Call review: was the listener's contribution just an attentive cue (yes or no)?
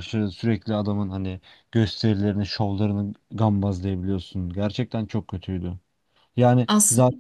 yes